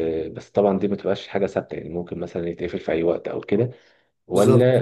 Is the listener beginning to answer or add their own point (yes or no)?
no